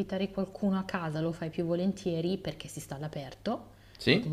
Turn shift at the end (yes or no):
no